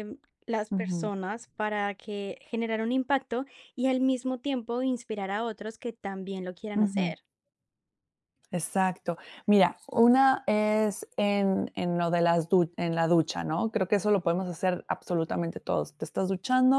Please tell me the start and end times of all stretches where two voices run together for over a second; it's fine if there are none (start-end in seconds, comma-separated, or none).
none